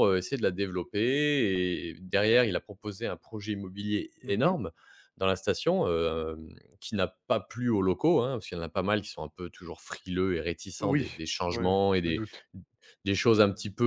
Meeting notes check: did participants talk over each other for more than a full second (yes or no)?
yes